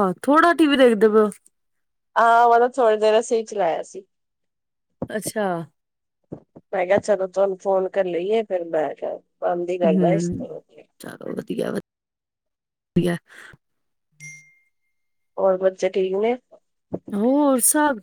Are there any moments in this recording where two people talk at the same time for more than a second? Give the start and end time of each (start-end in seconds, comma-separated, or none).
none